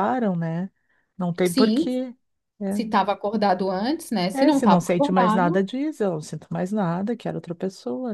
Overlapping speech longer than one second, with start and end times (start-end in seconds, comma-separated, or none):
4.3-5.7